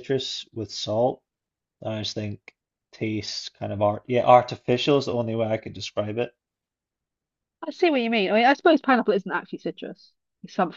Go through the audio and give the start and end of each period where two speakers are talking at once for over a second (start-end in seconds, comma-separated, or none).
none